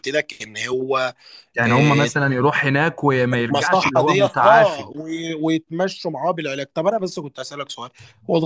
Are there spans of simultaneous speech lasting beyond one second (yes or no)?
yes